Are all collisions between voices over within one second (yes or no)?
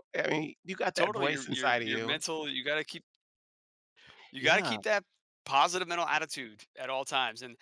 no